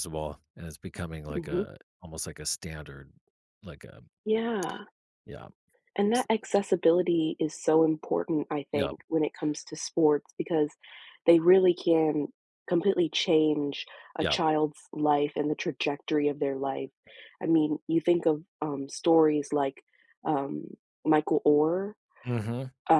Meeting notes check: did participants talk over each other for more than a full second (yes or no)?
no